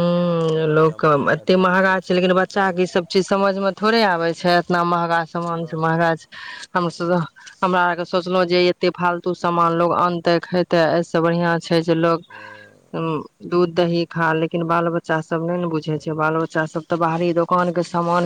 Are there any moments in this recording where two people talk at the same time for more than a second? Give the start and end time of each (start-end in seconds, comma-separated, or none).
1.0-2.9